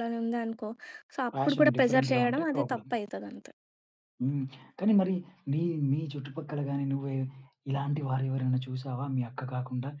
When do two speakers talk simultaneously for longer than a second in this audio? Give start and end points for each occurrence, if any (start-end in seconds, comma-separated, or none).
1.3-2.9